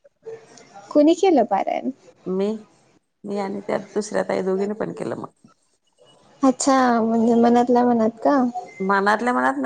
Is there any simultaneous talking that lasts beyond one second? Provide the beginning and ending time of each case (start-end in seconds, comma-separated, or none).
none